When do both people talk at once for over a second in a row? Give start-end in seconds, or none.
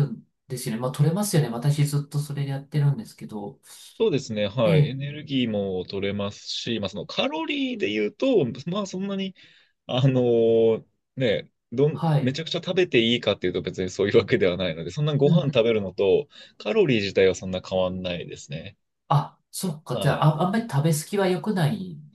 none